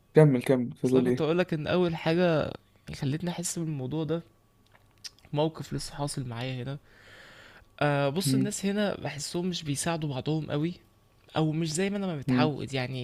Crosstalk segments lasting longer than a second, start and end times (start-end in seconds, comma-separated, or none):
none